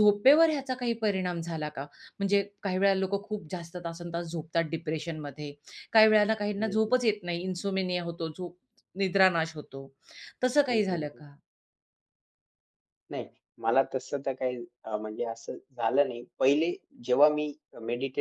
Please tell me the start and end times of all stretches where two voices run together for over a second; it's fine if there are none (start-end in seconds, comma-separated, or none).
none